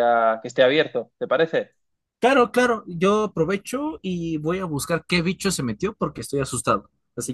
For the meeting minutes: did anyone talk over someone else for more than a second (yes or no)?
no